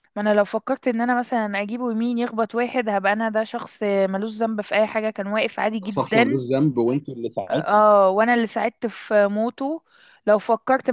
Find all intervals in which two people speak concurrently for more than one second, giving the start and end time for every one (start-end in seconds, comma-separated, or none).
none